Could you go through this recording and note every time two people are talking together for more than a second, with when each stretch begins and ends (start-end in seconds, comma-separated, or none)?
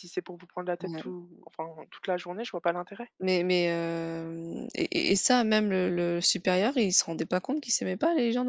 none